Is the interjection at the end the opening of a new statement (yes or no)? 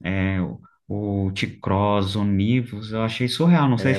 yes